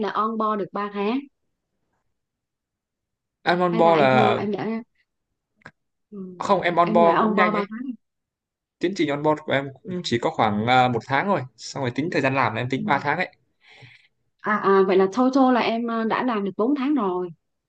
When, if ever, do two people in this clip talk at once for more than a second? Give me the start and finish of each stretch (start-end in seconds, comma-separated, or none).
6.4-7.7